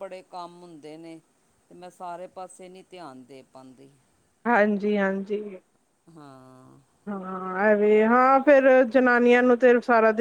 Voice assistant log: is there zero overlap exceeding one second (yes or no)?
yes